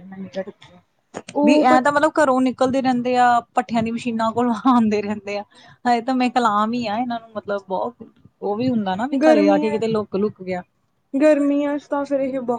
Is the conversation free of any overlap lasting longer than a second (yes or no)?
yes